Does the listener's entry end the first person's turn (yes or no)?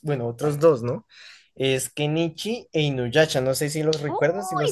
yes